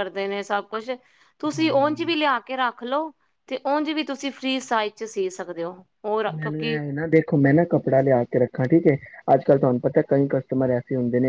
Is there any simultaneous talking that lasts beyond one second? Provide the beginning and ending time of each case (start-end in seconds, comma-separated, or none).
none